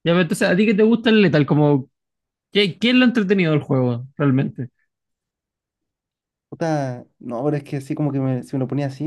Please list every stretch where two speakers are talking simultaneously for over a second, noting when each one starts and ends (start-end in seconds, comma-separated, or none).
none